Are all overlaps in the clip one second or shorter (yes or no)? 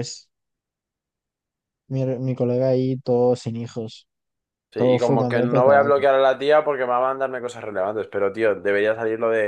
no